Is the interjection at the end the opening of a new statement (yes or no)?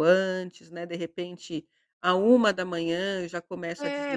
yes